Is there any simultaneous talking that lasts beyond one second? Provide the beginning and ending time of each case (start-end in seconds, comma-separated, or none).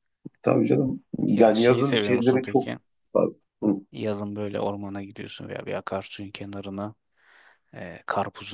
1.3-2.7